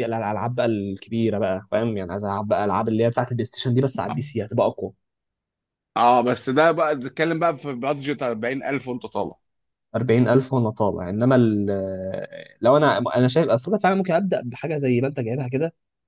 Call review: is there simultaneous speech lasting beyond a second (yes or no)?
no